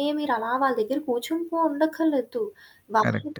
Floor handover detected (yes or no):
no